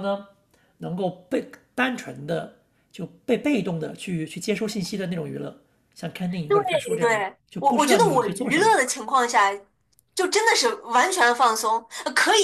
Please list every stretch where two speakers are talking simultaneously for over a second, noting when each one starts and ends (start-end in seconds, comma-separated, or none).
6.5-8.8